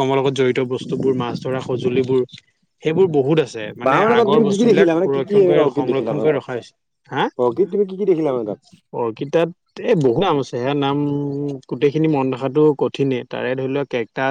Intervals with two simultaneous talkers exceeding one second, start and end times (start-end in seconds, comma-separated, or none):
3.9-6.4